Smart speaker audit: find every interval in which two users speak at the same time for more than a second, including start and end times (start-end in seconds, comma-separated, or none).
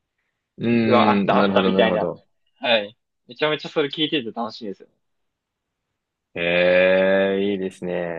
0.8-2.1